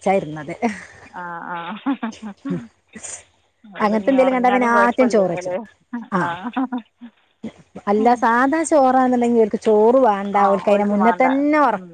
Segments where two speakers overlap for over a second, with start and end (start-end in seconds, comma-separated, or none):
3.9-5.5